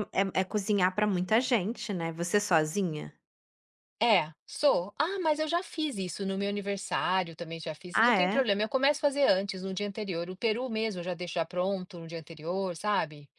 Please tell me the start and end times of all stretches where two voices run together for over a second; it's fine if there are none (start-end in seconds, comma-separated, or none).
none